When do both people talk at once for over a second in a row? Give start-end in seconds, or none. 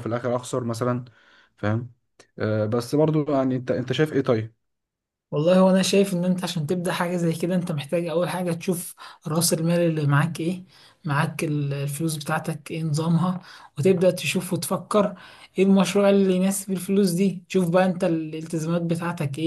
none